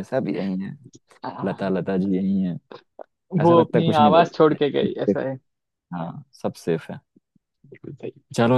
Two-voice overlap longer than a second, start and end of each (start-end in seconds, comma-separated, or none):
3.4-5.2